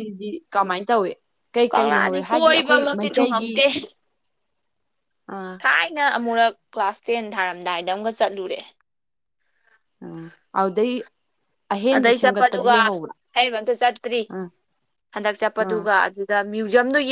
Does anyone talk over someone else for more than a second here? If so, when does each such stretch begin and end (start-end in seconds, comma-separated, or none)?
1.7-3.5